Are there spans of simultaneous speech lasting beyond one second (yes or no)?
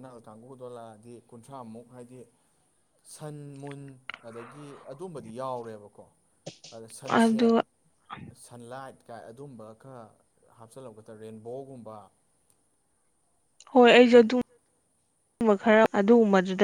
no